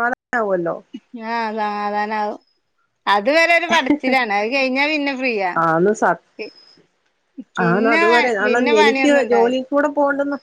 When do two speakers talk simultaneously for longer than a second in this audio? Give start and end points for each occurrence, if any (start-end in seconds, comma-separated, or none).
7.7-9.6